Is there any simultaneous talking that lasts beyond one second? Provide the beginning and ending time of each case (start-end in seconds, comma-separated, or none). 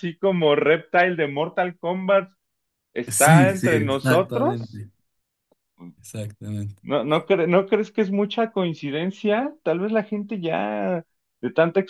3.1-4.8